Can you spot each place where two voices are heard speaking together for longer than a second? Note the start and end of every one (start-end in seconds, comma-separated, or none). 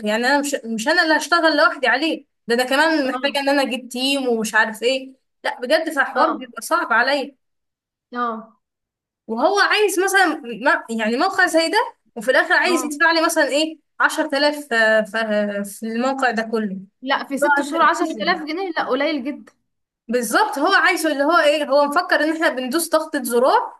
none